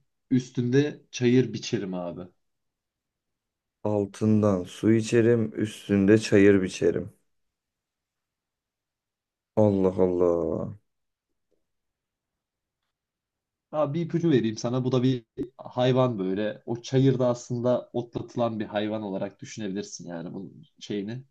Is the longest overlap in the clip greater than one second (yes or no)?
no